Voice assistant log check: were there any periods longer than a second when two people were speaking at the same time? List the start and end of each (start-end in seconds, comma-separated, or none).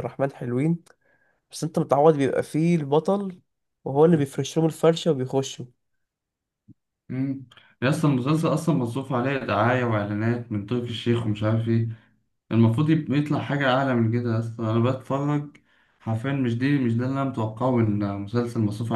none